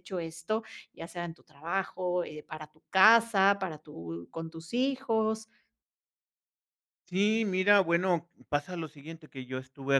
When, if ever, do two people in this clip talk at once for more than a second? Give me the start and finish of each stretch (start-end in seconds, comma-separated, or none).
none